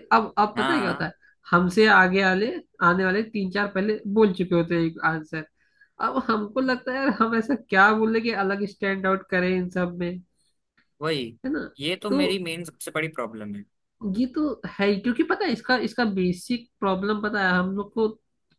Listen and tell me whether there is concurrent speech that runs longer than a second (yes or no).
no